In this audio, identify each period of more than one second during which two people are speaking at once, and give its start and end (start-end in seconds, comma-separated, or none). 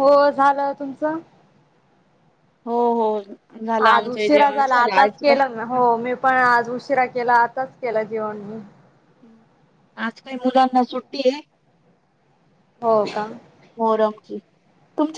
3.9-5.3